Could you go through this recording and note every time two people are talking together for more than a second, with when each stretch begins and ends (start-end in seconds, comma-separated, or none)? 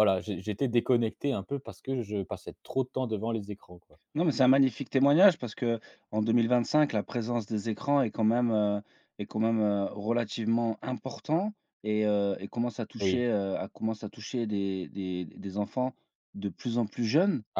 none